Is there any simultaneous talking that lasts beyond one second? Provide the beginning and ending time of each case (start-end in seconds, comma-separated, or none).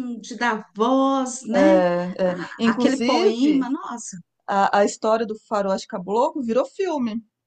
2.3-3.7